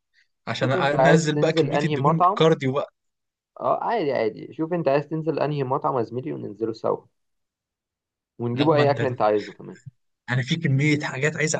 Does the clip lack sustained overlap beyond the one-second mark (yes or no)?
no